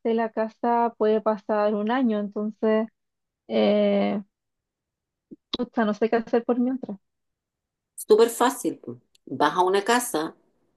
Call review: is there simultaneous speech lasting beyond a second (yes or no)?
no